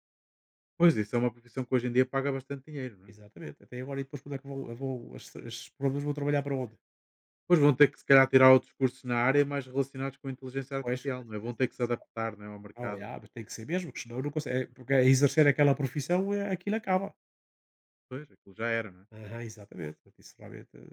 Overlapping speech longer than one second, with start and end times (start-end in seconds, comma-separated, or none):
10.8-12.1